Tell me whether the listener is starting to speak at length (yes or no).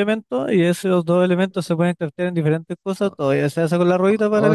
yes